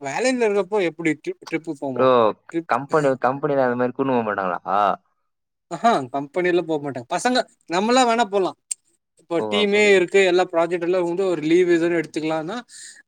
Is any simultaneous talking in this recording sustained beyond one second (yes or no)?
no